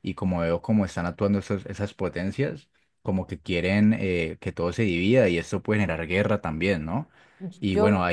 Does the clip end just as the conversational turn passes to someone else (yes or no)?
no